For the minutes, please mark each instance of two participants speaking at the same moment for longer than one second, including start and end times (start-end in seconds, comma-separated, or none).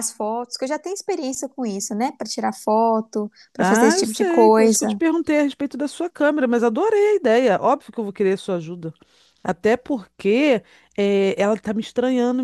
3.6-5.0